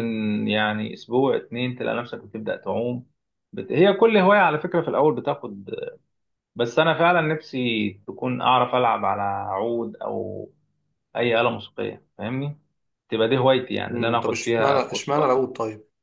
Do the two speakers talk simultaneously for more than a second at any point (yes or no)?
yes